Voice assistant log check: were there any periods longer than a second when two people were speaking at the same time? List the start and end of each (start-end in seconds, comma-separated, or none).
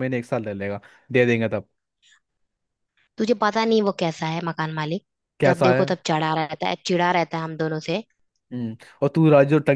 none